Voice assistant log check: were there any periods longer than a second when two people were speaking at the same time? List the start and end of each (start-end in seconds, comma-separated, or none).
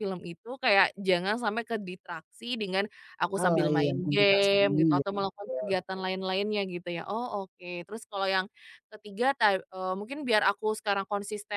3.4-5.7